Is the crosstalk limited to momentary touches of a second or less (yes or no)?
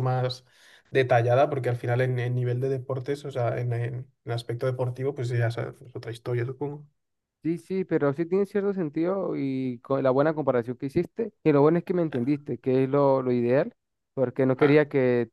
yes